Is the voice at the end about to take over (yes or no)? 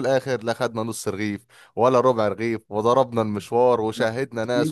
no